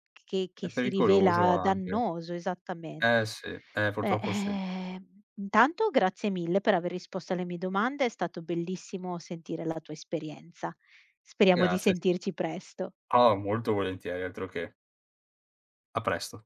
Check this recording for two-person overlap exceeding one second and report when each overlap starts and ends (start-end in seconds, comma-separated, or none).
0.6-1.9